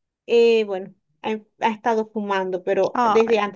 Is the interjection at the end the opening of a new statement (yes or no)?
no